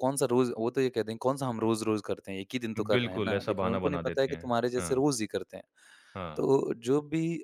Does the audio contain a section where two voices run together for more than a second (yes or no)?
yes